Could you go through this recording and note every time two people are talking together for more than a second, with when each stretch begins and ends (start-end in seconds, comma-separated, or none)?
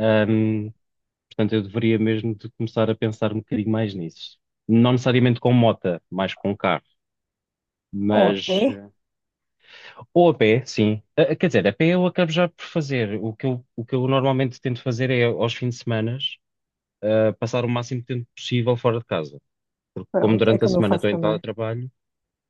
20.1-21.4